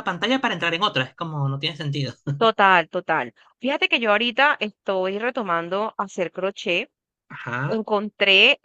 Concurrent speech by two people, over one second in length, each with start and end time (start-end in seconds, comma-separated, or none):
none